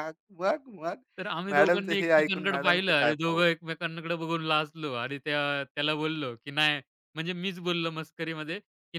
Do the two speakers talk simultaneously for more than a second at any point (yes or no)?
yes